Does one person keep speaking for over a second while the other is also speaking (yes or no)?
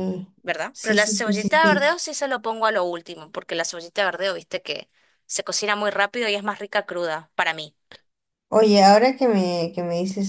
yes